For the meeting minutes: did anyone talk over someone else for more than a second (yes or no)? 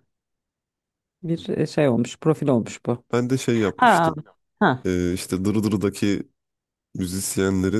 no